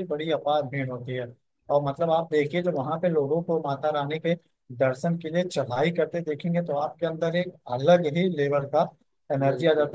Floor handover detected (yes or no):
no